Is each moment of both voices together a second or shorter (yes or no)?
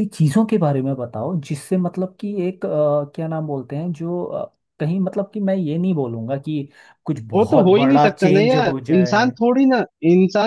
no